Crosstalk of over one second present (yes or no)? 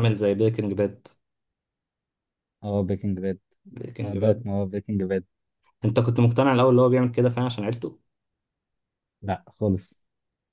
no